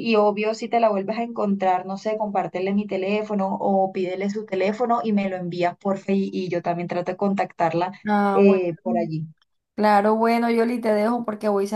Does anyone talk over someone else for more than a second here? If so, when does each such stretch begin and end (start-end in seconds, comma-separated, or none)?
none